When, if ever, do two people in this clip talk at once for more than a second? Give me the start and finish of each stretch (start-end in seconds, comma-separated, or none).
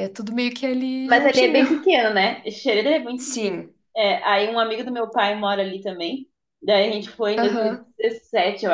none